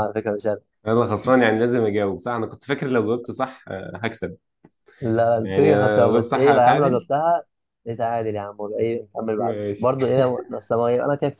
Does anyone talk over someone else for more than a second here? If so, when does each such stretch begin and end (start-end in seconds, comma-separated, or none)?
5.4-7.1